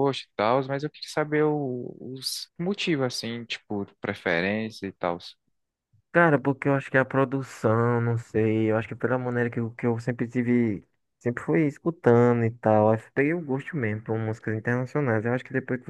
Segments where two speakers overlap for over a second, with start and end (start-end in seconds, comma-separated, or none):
none